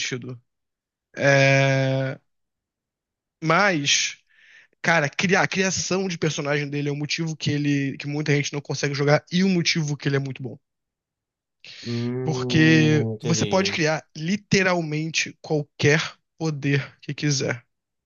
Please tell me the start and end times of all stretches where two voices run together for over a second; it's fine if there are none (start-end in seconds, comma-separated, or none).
12.2-13.8